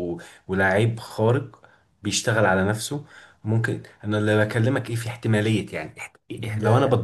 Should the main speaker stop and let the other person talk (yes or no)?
no